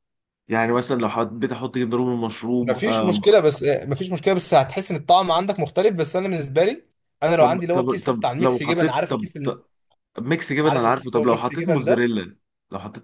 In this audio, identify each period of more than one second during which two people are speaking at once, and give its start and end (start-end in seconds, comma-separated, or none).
7.4-9.6, 10.6-12.1